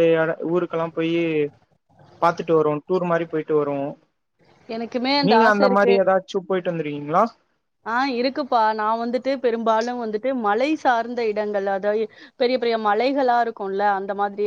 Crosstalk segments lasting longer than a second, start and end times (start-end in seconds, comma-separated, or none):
none